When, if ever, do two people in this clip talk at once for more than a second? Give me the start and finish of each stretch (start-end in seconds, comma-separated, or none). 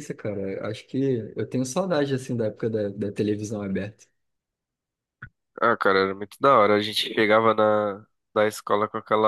none